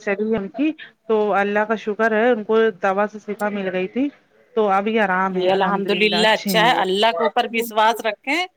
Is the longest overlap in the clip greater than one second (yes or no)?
no